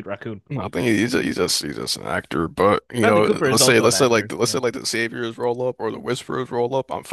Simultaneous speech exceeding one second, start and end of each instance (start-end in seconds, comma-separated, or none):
3.0-4.6